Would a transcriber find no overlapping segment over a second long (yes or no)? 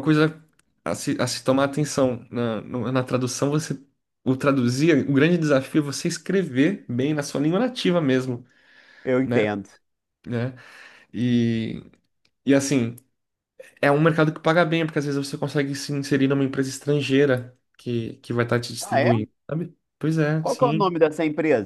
yes